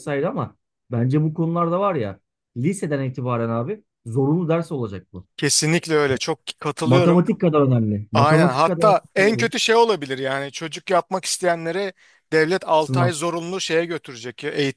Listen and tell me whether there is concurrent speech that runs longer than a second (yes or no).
yes